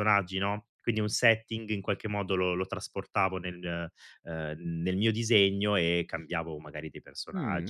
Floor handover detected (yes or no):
yes